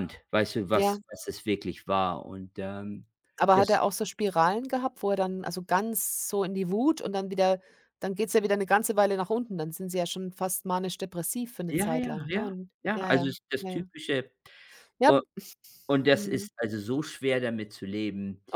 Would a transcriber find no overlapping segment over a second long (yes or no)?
no